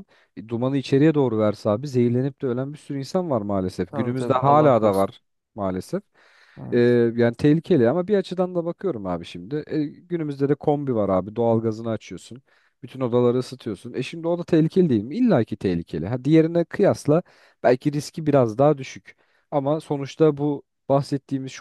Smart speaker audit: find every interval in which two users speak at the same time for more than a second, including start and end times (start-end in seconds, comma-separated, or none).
3.9-5.1